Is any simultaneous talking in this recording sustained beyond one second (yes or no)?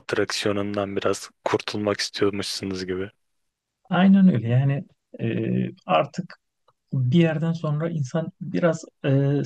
no